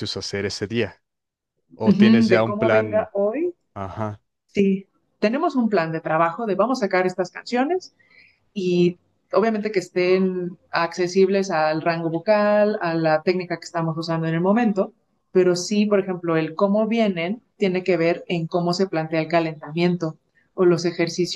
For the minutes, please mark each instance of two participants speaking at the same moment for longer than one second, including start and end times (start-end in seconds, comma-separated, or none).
1.9-3.1